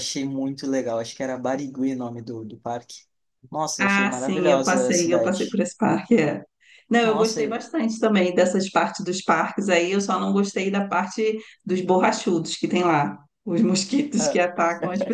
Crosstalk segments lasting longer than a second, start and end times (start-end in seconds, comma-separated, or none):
3.8-5.6